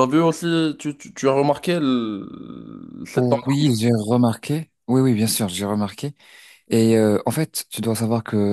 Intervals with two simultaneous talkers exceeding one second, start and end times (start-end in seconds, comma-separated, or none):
none